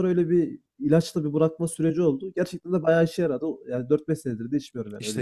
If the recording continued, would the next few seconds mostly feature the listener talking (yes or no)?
yes